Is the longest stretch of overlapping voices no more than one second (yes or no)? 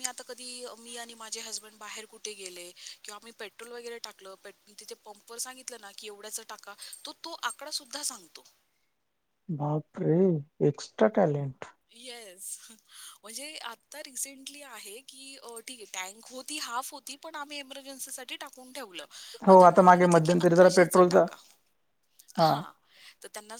no